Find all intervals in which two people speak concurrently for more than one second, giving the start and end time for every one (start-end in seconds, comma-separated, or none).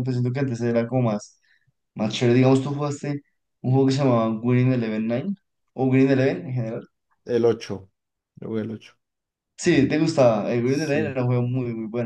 none